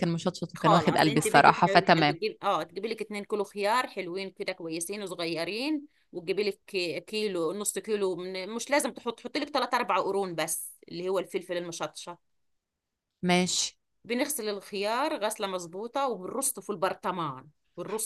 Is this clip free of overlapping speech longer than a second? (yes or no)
no